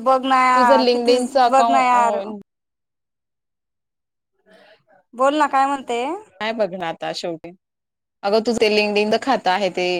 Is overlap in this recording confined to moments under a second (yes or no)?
no